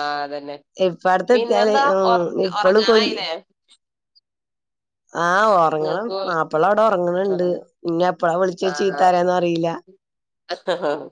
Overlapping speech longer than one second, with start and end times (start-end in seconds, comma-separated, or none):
none